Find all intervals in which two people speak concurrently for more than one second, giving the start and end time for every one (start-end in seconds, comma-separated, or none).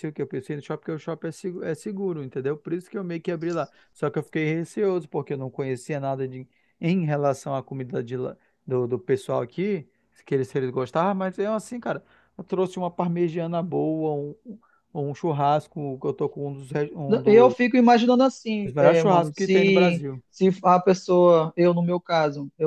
18.6-20.2